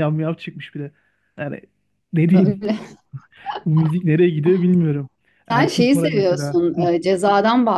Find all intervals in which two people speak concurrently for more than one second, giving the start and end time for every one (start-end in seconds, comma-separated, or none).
5.5-6.9